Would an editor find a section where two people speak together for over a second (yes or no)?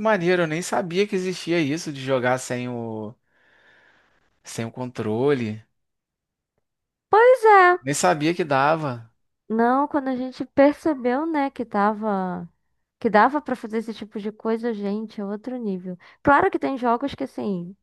no